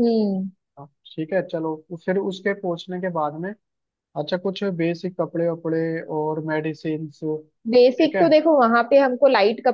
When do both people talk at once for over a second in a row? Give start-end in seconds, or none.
none